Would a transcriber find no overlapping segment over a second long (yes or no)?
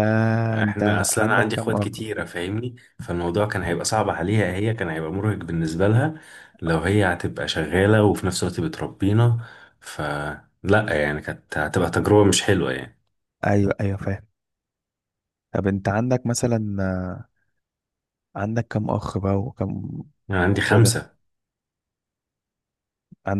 no